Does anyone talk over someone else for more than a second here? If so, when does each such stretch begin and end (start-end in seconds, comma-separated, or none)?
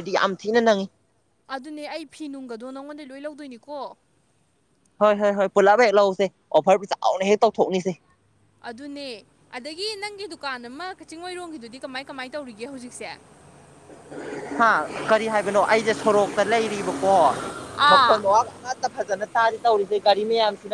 none